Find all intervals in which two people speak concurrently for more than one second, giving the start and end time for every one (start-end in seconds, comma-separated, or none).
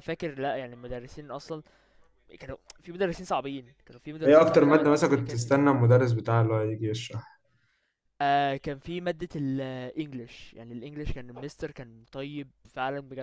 4.2-5.5